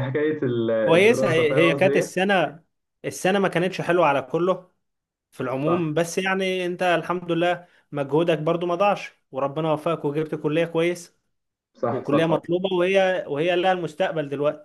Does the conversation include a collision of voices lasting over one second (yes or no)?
yes